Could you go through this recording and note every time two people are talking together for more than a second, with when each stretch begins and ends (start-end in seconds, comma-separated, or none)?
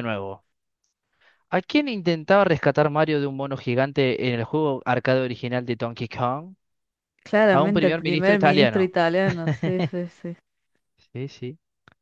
7.5-8.9